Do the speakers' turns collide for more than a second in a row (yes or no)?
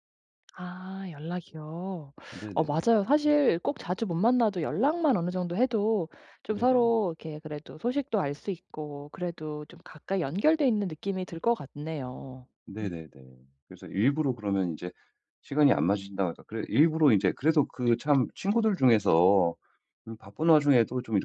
no